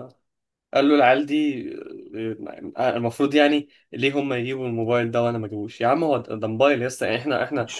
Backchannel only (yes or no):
yes